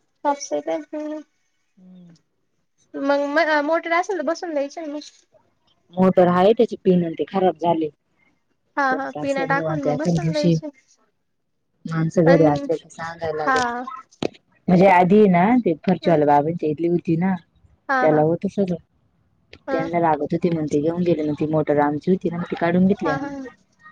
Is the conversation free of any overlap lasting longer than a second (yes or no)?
no